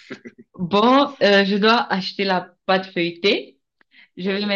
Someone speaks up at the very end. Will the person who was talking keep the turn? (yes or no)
yes